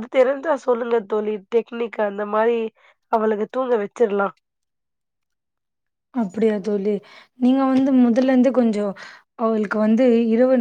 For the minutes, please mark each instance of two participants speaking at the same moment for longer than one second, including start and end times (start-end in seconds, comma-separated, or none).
none